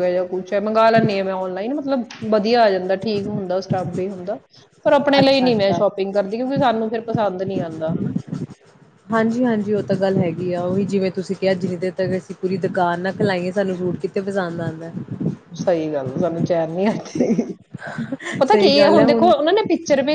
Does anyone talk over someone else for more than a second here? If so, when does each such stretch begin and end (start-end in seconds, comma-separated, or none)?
none